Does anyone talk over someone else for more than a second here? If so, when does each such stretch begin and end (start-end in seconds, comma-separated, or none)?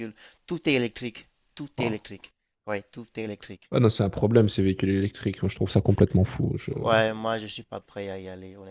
none